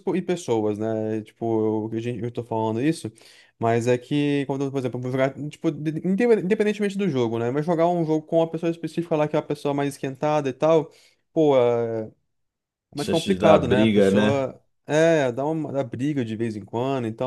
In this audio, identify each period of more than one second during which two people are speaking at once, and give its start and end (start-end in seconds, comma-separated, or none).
13.0-14.5